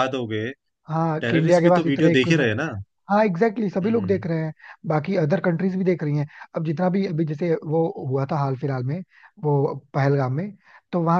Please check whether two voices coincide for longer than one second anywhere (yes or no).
yes